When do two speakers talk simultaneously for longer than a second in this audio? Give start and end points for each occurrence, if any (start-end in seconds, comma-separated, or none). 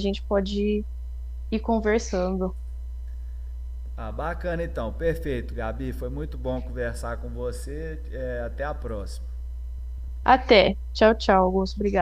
none